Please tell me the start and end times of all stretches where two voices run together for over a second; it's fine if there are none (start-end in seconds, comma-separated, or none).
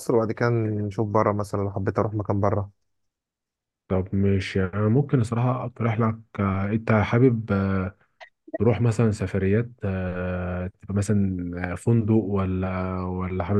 none